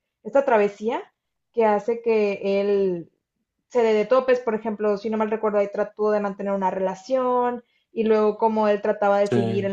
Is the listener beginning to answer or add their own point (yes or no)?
no